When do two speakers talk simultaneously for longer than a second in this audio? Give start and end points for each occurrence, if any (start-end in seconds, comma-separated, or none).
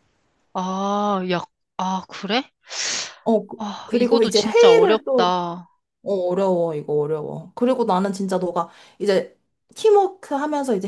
3.6-5.3